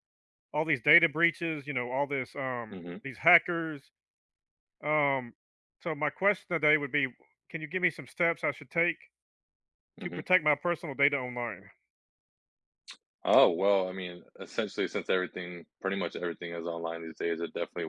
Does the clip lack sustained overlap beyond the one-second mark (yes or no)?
yes